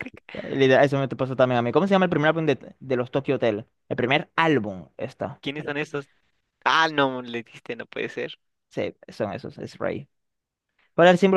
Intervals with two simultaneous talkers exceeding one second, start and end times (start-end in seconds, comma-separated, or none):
none